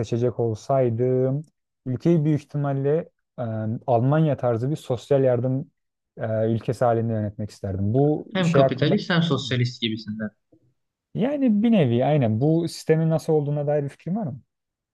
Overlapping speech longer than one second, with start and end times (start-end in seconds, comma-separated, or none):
8.3-9.6